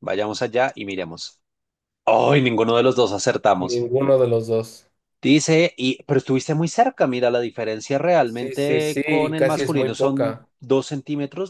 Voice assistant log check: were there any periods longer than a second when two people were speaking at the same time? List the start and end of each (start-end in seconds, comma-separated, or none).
8.2-10.5